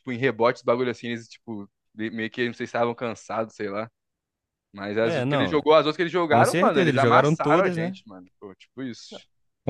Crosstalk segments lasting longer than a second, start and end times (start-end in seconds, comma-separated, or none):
6.3-8.0